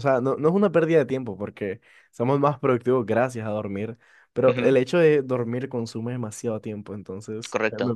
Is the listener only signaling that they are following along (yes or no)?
no